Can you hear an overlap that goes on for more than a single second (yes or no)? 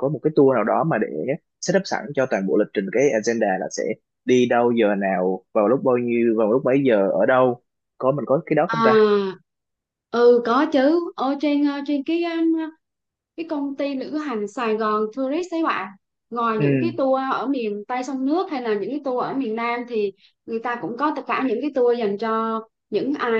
no